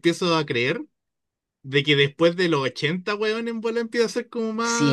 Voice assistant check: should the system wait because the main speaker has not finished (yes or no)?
no